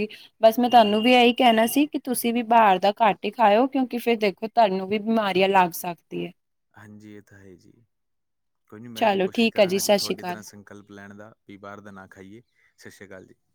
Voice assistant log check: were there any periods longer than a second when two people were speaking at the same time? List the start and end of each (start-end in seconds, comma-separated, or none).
9.0-10.4